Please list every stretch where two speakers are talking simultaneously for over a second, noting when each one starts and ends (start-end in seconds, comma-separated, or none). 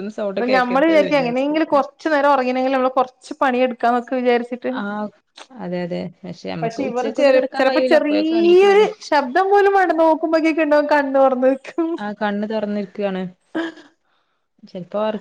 6.6-8.9